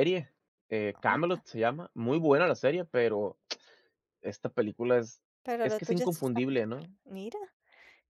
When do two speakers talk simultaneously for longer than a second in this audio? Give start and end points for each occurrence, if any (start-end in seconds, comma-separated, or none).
5.6-6.9